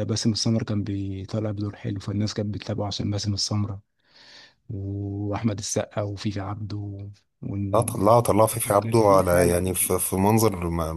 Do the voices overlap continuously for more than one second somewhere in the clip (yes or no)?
yes